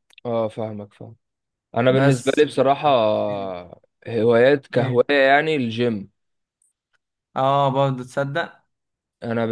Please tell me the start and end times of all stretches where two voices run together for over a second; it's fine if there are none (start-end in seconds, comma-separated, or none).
none